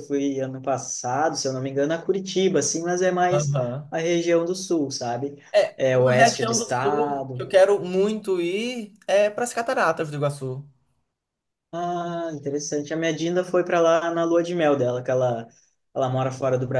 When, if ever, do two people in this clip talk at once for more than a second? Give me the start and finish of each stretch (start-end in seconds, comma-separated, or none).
5.5-7.5